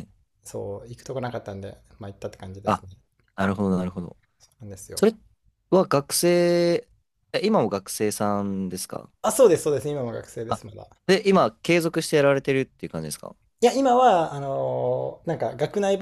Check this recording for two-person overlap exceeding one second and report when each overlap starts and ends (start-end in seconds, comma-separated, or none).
none